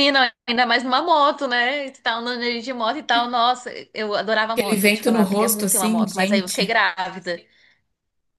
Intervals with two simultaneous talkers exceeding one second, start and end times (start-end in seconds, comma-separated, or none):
4.6-6.7